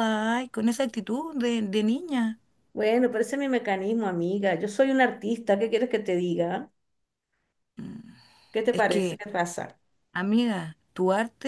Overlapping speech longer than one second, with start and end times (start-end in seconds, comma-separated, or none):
none